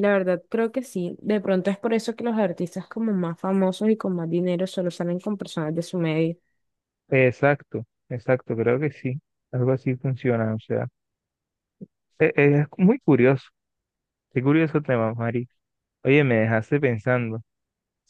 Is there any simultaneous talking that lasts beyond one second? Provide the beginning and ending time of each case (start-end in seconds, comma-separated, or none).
none